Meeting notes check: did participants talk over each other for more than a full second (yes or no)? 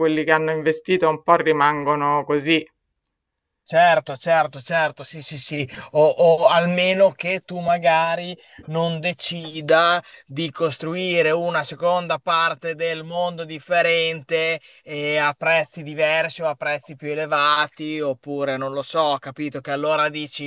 no